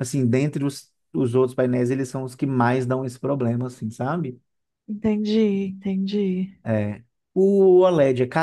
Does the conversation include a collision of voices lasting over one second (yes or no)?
no